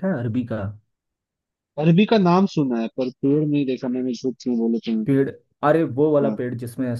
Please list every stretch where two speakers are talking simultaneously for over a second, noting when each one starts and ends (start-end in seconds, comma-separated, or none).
none